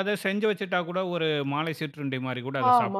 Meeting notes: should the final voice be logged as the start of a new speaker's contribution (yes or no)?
yes